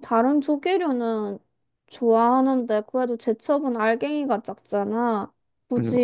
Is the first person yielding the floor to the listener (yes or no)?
no